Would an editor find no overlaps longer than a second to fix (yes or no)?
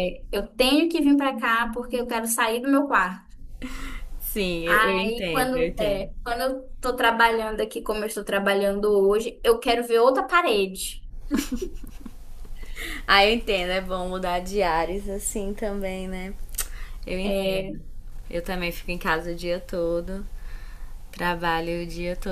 no